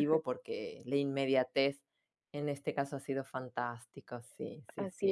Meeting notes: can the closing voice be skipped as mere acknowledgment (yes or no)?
no